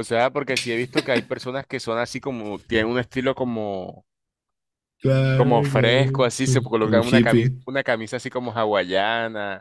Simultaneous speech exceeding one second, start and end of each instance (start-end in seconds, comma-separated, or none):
5.3-7.6